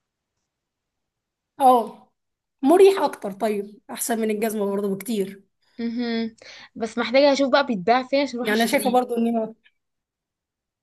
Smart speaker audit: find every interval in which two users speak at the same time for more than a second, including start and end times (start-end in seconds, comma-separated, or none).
none